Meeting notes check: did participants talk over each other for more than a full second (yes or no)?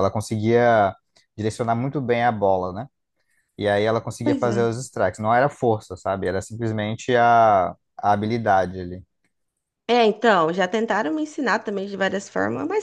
no